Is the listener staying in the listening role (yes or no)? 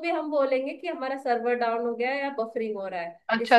no